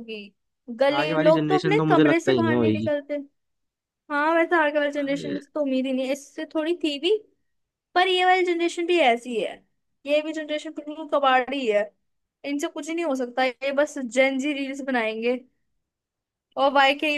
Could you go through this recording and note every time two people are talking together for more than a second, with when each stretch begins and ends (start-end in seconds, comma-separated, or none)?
1.0-2.9